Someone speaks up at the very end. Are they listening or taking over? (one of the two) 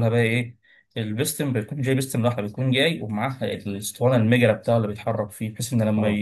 listening